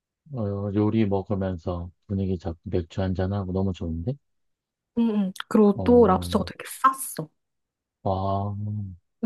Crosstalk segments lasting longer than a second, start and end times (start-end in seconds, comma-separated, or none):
none